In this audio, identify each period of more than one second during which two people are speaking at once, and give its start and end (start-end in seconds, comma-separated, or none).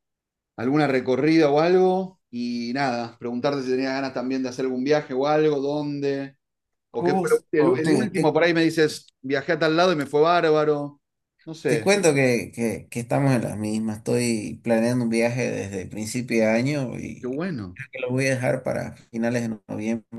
6.9-8.4